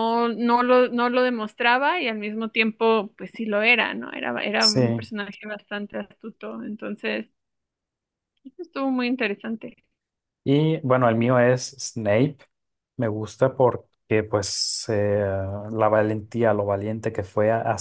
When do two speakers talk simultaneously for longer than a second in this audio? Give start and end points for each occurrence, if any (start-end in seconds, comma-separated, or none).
none